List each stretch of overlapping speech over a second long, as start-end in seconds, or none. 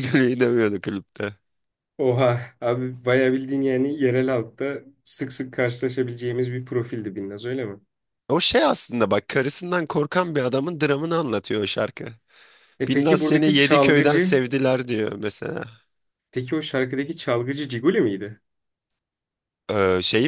12.9-14.4